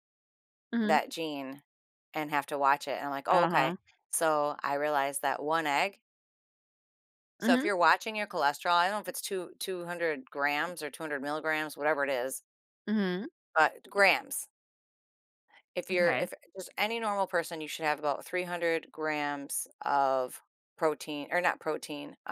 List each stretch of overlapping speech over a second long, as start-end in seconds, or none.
none